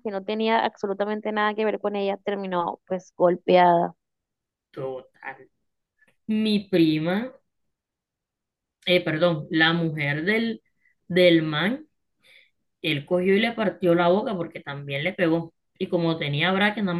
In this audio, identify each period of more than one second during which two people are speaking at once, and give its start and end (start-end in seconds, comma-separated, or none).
none